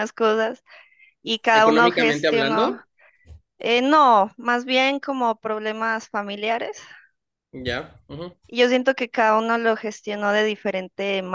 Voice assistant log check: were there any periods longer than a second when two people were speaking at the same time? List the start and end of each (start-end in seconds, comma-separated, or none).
1.5-2.8